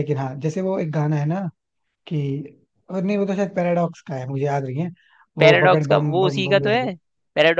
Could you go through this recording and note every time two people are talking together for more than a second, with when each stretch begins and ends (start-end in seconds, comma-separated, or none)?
5.4-6.9